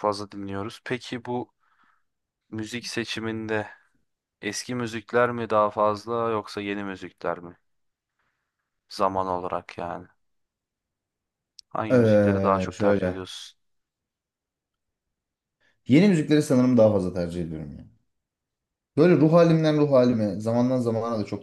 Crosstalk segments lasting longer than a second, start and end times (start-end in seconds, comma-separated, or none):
11.9-13.2